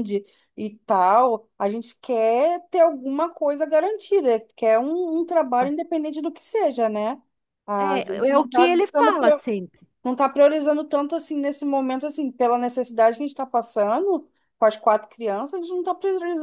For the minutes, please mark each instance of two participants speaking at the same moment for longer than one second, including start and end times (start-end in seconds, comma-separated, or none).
7.8-9.1